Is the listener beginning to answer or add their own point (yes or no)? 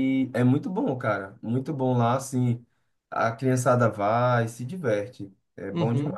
yes